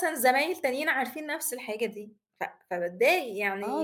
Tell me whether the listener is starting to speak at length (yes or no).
yes